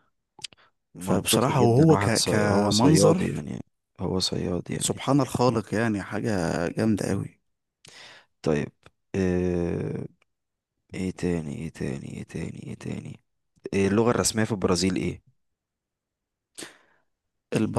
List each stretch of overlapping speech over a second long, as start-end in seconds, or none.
1.0-3.5